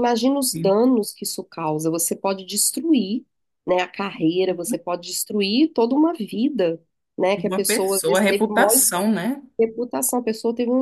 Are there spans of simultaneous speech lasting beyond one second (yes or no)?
yes